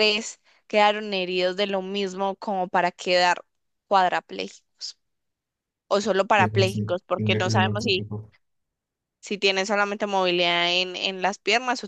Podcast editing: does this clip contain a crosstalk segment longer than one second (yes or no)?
yes